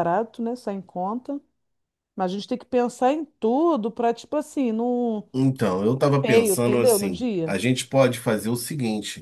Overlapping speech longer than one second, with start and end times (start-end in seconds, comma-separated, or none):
6.2-7.5